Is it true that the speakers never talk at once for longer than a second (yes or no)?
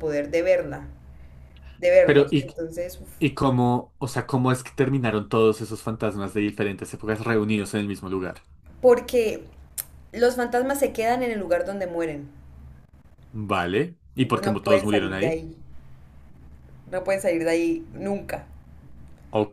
no